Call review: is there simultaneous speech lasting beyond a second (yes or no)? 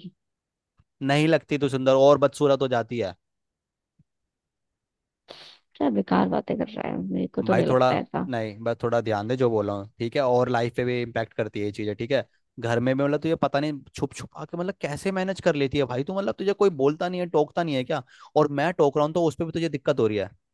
no